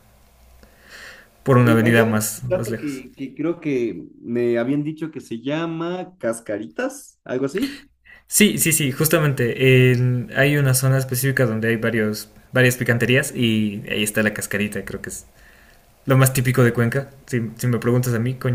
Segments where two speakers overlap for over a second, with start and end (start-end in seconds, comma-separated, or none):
1.6-3.0